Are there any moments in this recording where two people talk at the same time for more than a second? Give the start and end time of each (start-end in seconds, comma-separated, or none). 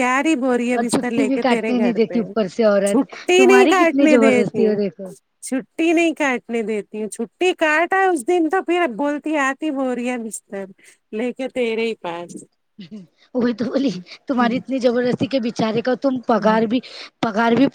0.8-2.2, 2.9-4.7